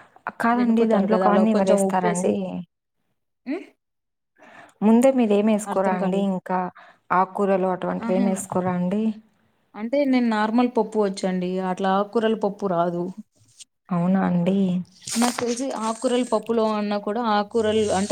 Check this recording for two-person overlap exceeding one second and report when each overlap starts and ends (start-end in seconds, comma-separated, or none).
0.6-2.3